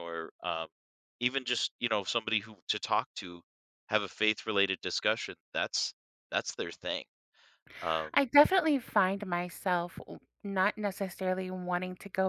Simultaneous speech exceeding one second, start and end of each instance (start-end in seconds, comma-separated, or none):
none